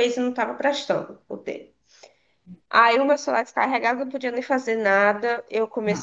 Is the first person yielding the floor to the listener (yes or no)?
no